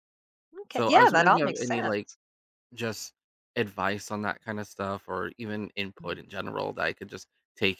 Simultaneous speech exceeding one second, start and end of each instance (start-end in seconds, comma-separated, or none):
0.7-2.1